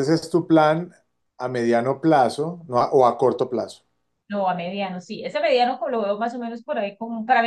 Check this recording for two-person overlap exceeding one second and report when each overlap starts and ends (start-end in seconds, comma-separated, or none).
none